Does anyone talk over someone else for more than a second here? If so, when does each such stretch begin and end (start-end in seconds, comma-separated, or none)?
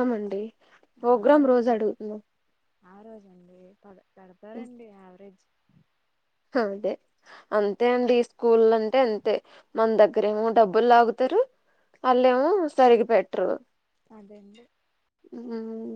none